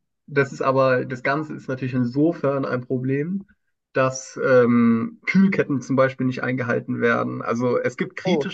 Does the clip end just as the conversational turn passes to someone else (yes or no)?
no